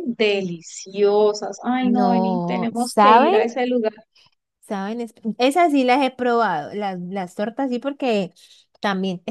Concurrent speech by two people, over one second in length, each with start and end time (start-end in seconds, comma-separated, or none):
1.8-3.4